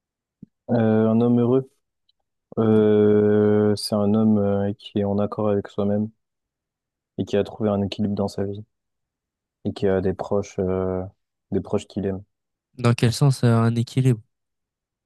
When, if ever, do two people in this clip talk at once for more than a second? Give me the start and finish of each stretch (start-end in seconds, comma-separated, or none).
none